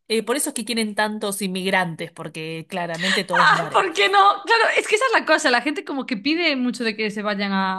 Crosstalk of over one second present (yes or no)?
no